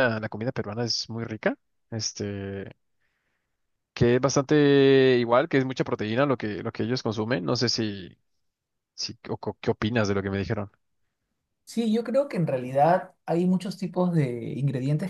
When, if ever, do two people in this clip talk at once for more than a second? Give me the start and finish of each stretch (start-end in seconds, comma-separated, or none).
none